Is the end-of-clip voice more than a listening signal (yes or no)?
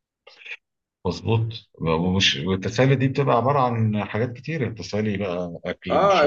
yes